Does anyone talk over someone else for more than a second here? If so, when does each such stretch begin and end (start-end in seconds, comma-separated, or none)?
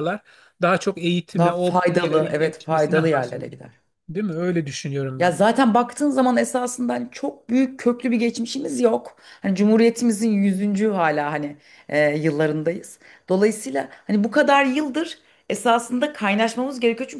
1.4-3.6